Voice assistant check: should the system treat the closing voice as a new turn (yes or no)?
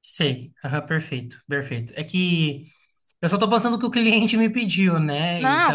yes